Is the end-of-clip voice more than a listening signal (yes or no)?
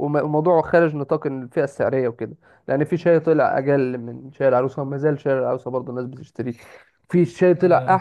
no